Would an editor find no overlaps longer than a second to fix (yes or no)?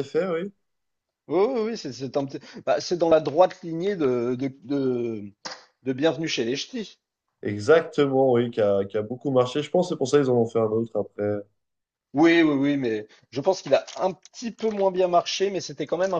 yes